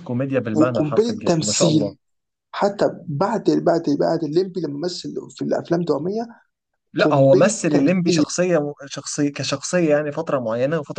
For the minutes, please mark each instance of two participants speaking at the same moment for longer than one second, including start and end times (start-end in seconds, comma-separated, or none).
0.5-1.9, 7.0-8.2